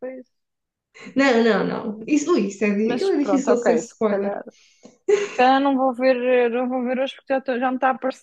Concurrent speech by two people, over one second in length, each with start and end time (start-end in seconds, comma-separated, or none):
2.8-4.4